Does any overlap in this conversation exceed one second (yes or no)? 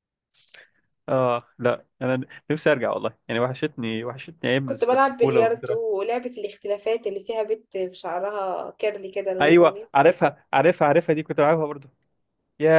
yes